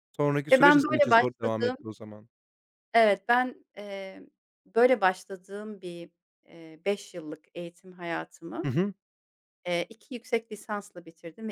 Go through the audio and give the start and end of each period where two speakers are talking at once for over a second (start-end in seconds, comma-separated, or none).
0.5-1.8